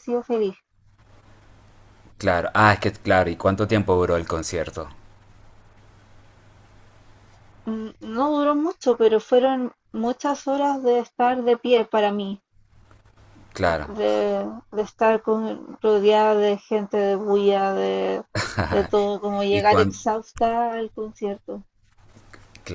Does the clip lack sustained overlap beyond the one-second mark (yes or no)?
yes